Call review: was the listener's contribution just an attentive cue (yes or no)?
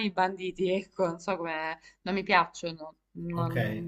no